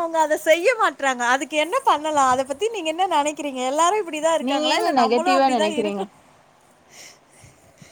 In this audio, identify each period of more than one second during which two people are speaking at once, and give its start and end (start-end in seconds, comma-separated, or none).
4.5-6.0